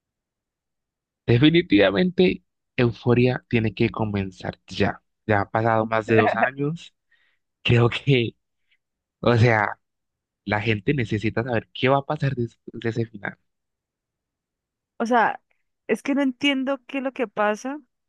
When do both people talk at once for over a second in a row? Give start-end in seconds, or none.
none